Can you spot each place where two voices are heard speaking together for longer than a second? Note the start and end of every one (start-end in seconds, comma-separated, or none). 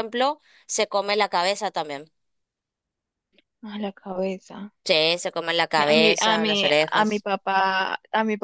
5.8-7.2